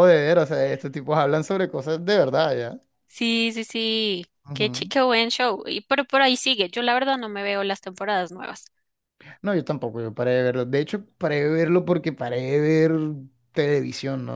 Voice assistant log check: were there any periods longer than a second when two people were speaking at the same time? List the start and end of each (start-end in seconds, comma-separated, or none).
none